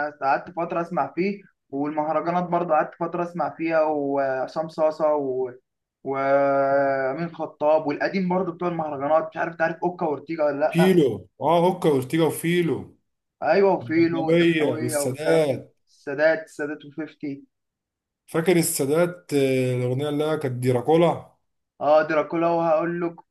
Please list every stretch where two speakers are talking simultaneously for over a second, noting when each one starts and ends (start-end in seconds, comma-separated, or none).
13.8-15.8